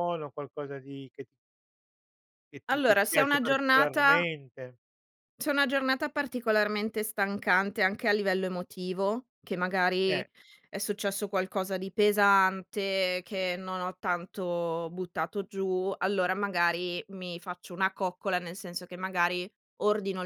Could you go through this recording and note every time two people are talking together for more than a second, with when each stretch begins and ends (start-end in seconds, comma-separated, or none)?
2.7-4.2